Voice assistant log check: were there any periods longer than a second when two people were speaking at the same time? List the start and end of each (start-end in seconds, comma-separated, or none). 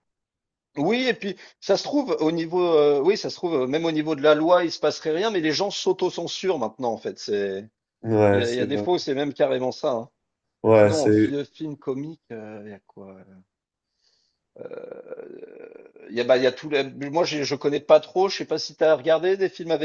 none